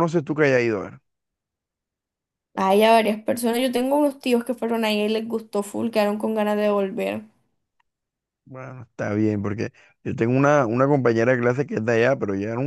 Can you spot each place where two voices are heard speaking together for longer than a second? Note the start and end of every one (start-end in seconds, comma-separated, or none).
none